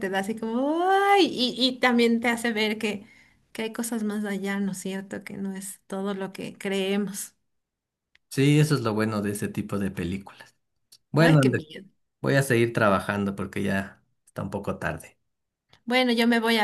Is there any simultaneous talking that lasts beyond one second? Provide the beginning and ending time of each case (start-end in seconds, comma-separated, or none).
none